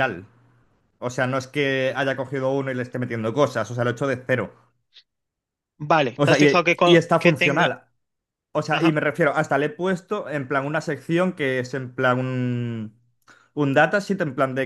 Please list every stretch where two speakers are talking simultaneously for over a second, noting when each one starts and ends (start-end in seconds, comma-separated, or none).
6.1-7.7